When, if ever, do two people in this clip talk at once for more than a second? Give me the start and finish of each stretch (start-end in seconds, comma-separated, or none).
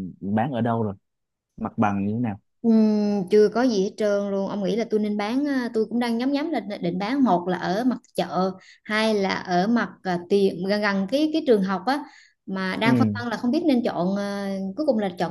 none